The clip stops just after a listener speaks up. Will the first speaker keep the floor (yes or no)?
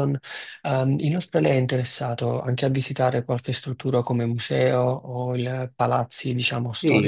no